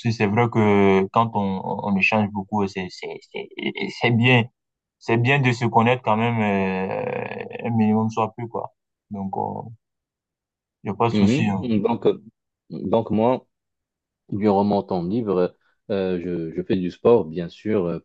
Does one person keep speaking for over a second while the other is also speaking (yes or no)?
no